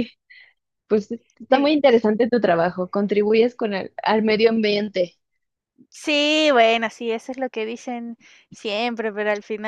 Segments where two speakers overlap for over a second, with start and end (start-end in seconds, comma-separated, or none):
none